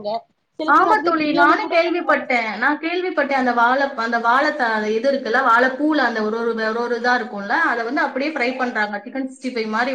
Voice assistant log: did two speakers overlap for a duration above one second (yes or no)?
yes